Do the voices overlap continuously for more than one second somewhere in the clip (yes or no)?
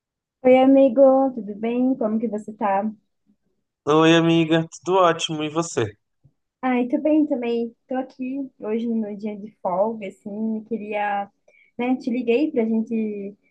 no